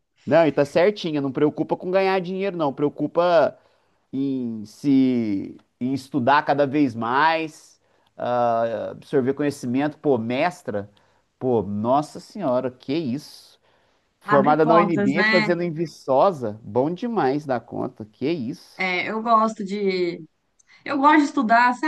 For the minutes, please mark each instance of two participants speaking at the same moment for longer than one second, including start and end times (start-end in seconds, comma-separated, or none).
14.3-15.6